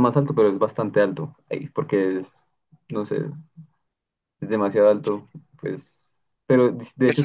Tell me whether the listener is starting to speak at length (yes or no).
yes